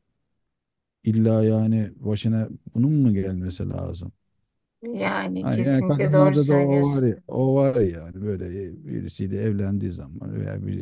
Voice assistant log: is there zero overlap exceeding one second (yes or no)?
no